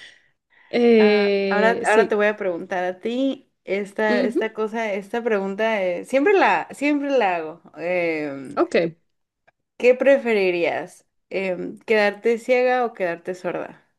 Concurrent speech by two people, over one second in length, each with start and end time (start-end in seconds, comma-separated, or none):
1.0-2.2